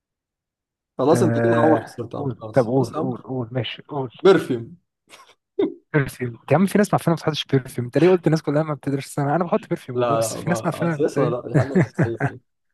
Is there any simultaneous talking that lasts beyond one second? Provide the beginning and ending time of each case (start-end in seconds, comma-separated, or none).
1.1-3.3, 9.9-11.4